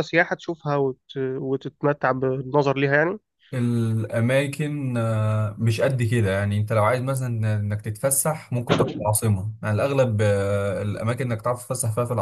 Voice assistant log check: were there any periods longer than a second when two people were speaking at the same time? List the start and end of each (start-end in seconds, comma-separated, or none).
none